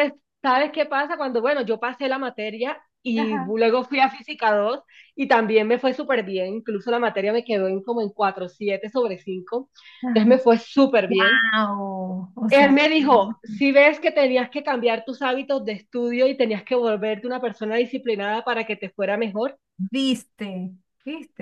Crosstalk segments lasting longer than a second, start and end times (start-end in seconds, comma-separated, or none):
none